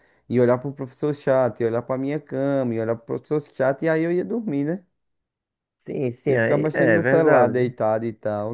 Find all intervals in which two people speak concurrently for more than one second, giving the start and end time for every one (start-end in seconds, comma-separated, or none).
6.3-7.7